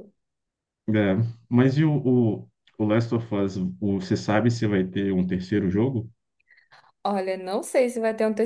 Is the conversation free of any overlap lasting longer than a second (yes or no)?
yes